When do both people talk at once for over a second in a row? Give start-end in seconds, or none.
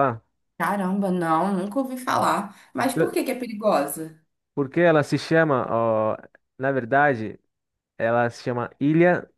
none